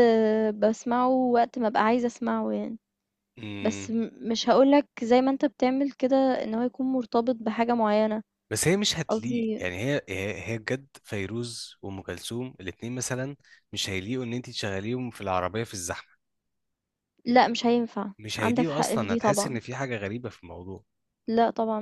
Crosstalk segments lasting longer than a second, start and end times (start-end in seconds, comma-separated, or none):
18.2-19.6